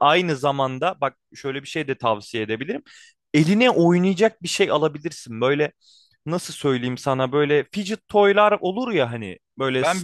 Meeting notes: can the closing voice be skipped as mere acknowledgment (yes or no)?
no